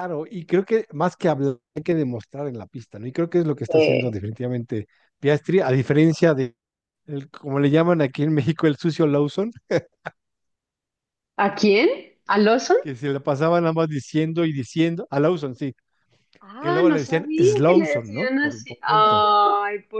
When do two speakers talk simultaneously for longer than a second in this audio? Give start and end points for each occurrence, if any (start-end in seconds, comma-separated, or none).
16.6-19.3